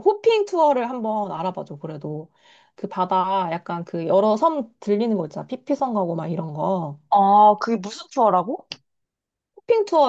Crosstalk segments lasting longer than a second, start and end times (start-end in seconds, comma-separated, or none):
none